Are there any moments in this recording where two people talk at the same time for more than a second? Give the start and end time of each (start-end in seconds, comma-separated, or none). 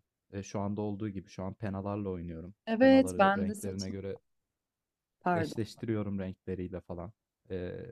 2.6-4.0